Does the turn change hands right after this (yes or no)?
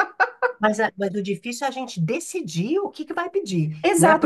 yes